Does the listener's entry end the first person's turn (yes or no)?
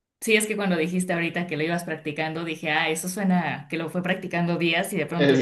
yes